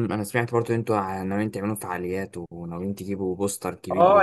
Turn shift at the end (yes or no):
yes